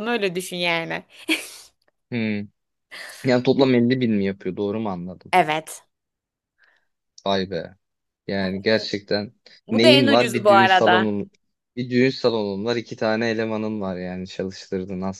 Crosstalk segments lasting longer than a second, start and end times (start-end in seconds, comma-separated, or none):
9.7-11.2